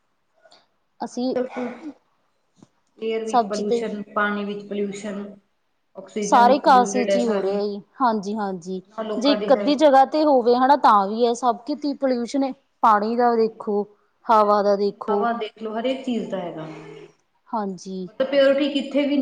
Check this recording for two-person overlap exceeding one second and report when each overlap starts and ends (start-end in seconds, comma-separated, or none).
6.2-7.6